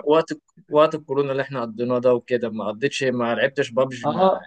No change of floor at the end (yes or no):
no